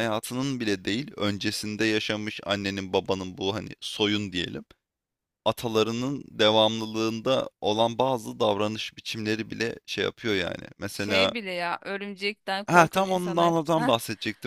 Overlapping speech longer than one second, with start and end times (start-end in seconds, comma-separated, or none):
12.7-13.9